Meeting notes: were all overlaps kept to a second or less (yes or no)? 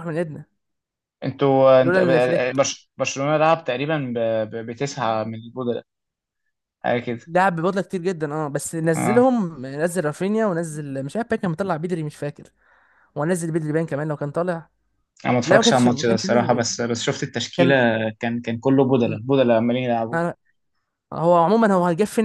no